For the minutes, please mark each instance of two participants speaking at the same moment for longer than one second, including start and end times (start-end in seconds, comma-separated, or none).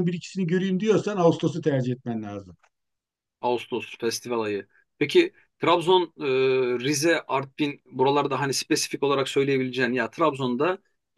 none